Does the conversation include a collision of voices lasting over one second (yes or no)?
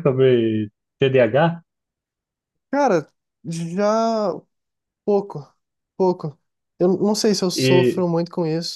no